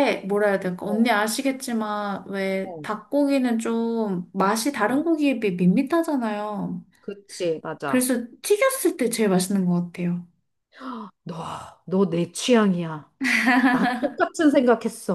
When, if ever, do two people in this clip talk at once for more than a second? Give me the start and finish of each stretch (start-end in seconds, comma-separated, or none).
none